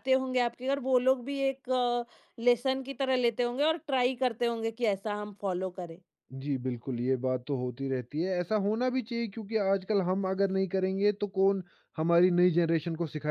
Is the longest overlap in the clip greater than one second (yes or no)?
no